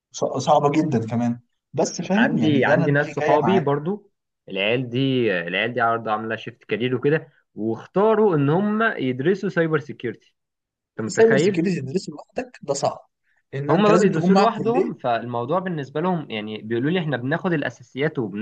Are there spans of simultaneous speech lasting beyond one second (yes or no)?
yes